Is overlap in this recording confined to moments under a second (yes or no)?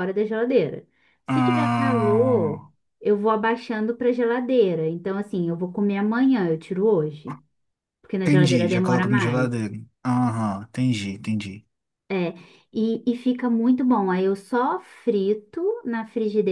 no